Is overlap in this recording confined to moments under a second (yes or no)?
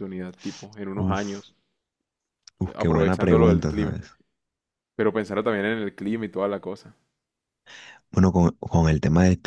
no